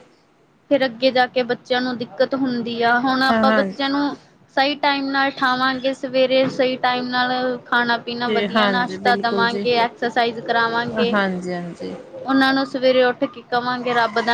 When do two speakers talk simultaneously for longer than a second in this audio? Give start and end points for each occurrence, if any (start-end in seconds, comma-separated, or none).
8.0-9.7